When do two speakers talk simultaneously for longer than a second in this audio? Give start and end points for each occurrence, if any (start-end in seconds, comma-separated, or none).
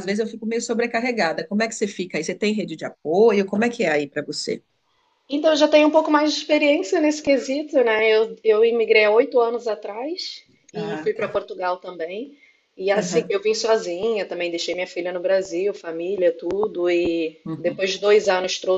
none